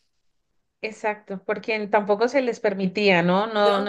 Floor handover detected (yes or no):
no